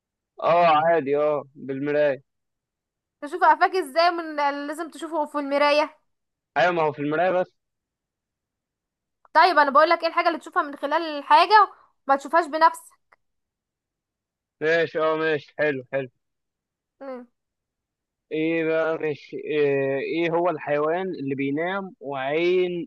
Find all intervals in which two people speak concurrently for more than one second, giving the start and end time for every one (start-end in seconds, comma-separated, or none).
none